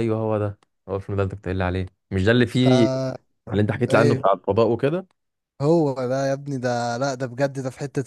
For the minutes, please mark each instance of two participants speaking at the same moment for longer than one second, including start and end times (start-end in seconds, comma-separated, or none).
none